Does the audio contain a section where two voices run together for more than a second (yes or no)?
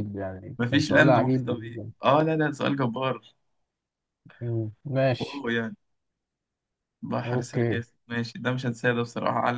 yes